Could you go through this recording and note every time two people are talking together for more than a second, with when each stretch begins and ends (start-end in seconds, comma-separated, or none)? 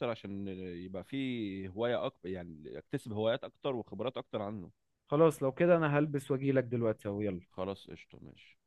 none